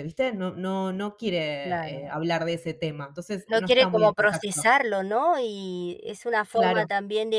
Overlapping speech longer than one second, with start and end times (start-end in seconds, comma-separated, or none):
3.5-4.7